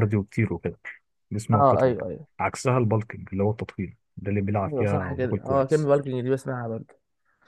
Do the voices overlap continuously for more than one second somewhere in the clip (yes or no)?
yes